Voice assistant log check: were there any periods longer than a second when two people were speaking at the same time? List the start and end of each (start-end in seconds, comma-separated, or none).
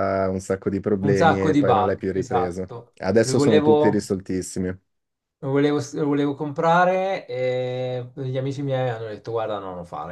1.0-4.1